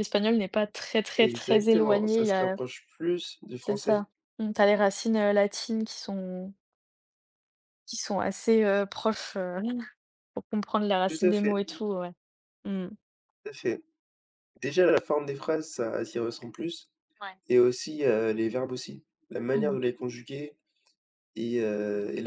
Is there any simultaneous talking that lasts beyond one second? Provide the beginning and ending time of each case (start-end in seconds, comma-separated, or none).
1.2-2.6